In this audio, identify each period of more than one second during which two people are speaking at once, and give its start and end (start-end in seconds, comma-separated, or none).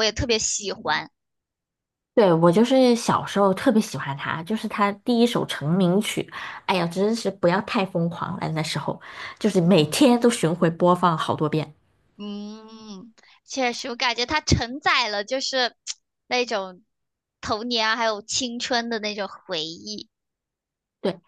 none